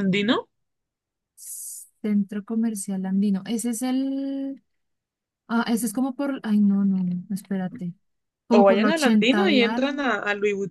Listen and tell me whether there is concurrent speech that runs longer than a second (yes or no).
yes